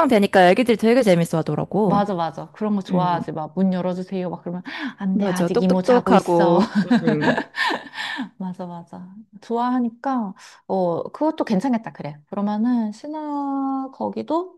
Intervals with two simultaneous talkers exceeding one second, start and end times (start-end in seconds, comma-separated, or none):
5.1-6.6